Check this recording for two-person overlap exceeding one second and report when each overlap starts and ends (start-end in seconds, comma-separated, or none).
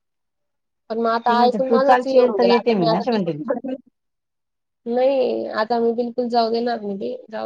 1.3-3.4